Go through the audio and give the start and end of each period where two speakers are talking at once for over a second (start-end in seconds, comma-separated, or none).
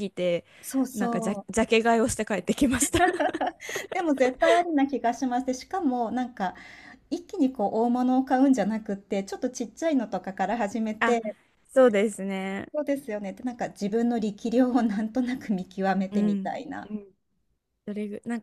none